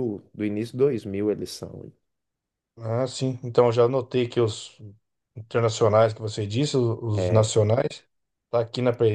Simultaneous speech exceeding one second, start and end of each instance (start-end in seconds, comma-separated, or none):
none